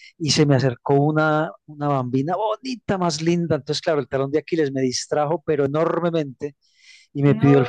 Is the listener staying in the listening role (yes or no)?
yes